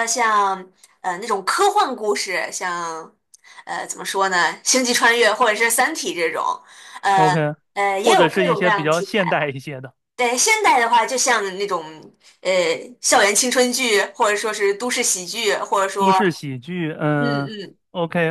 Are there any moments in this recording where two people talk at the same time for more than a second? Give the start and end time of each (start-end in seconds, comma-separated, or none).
8.0-9.2